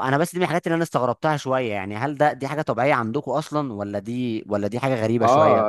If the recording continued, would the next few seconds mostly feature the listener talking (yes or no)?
yes